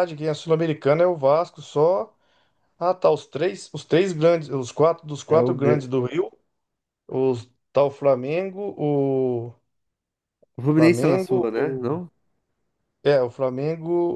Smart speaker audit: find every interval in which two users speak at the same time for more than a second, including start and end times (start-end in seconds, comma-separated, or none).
10.7-12.0